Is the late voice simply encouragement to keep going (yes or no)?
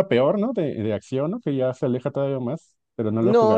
no